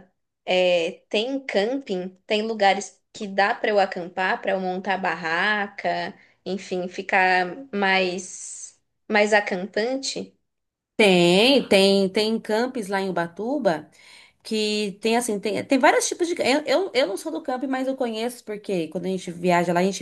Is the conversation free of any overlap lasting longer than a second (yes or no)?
yes